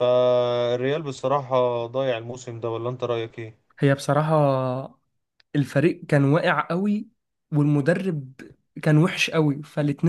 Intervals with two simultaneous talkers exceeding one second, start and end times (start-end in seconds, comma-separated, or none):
none